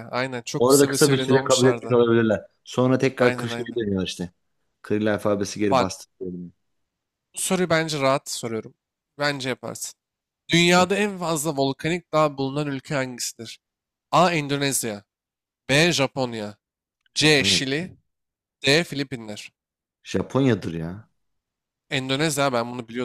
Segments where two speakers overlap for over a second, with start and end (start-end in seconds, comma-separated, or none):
0.6-2.0